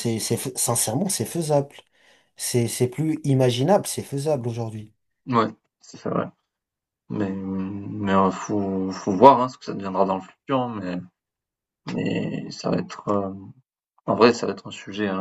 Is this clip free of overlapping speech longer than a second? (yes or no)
yes